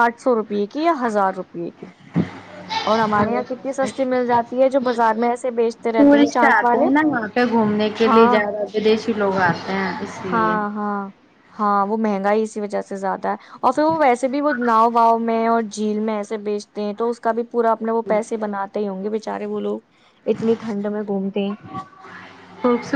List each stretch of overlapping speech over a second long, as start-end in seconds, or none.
none